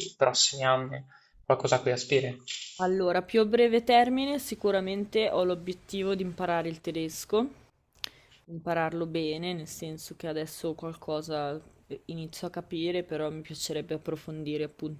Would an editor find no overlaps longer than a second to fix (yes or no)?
yes